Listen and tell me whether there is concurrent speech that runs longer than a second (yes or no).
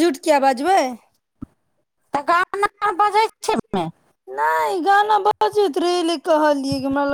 no